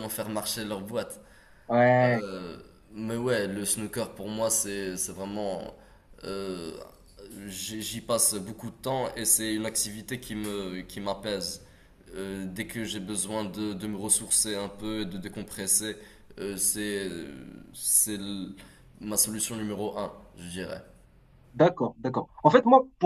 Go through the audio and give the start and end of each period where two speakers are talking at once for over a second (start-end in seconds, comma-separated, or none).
none